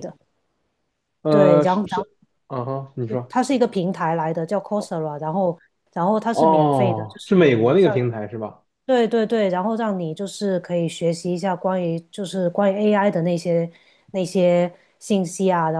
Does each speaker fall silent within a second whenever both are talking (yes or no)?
no